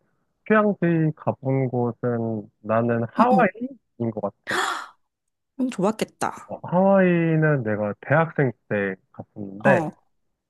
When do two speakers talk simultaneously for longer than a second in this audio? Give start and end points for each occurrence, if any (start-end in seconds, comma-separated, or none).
none